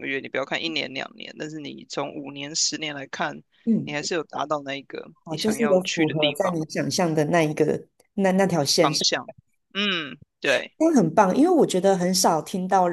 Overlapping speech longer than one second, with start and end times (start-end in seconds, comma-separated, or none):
5.2-6.6